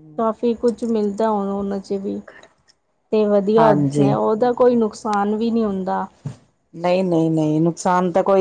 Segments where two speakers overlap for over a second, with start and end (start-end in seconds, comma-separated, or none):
none